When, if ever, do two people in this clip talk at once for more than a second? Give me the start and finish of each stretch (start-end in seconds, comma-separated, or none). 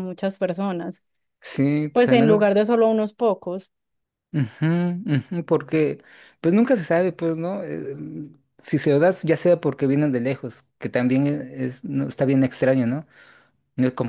none